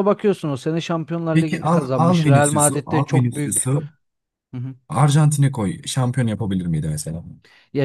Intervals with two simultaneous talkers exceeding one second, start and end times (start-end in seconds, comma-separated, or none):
1.4-3.7